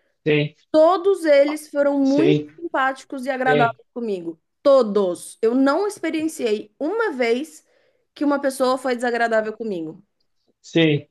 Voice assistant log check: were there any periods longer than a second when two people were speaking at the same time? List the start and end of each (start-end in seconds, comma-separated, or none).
none